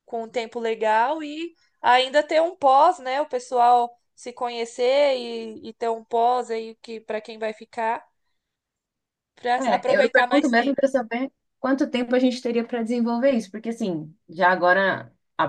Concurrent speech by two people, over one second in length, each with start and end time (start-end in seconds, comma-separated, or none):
9.6-10.8